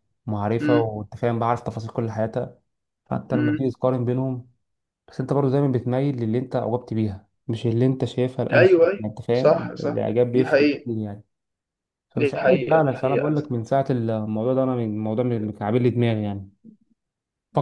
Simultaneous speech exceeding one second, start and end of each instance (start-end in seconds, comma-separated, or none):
8.5-10.9, 12.2-13.6